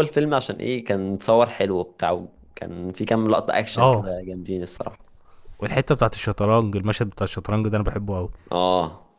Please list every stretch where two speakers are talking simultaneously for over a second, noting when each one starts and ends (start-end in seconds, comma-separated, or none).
none